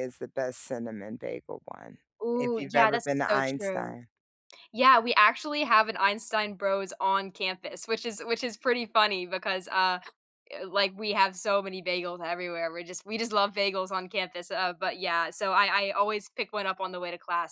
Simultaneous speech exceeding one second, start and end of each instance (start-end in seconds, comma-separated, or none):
2.3-4.0